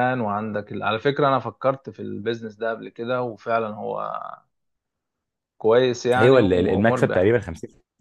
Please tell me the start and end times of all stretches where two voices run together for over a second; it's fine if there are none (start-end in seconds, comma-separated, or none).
6.2-7.4